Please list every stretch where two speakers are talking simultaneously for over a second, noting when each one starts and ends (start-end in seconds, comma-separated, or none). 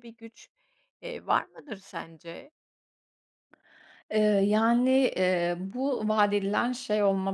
none